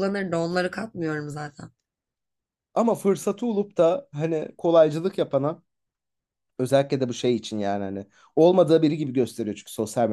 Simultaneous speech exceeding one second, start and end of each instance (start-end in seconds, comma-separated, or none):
none